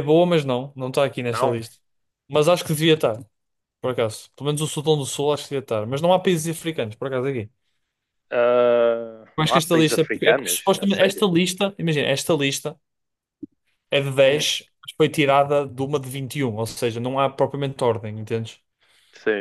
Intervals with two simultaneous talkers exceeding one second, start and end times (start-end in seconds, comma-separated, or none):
9.4-11.2